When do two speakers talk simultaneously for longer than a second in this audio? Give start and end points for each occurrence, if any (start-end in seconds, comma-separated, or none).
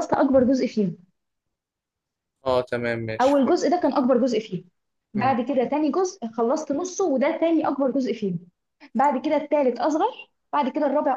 none